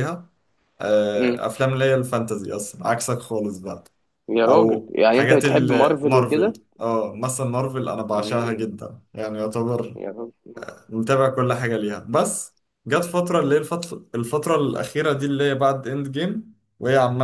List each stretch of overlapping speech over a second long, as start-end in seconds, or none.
4.5-6.6